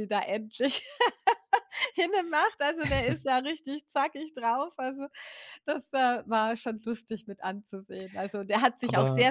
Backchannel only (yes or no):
yes